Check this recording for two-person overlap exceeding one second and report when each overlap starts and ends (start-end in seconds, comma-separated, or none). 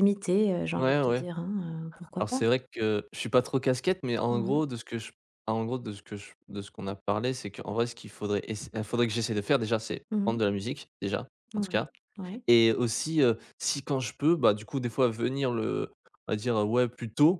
none